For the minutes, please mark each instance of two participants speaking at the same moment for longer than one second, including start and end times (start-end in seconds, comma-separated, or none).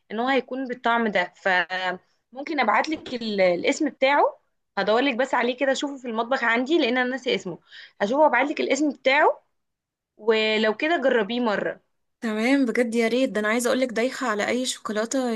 none